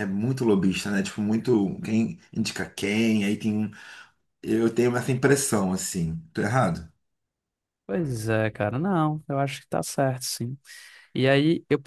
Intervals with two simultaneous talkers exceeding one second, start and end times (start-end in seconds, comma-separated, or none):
none